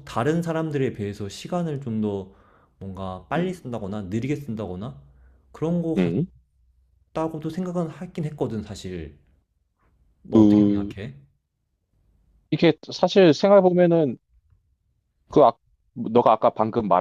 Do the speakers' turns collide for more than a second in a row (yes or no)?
no